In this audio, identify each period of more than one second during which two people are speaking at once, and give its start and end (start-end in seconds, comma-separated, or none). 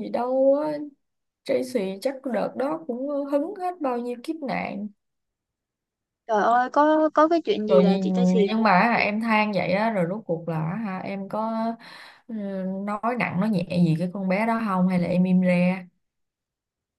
none